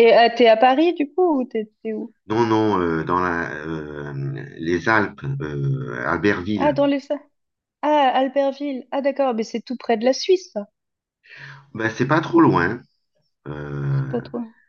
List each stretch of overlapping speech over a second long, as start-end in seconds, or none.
none